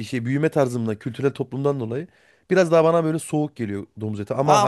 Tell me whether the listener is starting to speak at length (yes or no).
yes